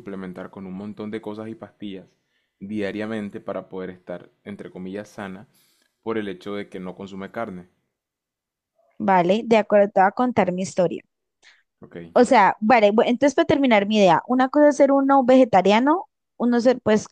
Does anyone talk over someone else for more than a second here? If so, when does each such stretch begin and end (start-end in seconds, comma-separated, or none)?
none